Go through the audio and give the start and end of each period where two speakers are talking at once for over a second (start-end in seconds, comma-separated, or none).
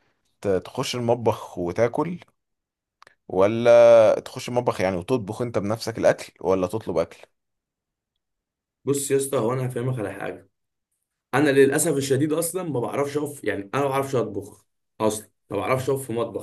none